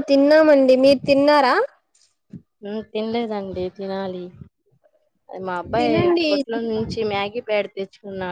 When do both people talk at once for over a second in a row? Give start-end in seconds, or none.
none